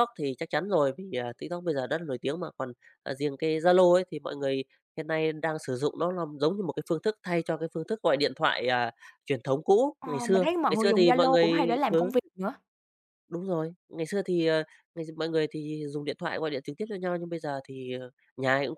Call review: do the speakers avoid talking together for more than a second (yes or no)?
no